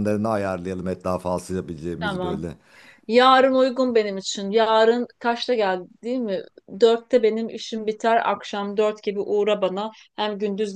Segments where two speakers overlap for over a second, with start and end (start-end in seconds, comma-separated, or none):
none